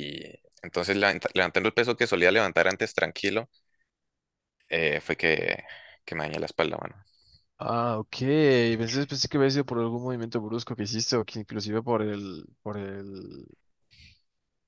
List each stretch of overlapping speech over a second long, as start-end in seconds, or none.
none